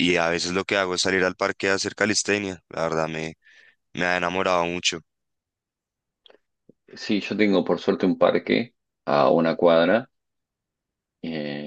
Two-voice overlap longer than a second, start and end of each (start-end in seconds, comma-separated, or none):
none